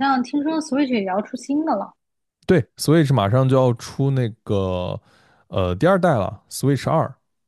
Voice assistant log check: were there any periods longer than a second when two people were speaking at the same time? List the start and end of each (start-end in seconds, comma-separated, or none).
none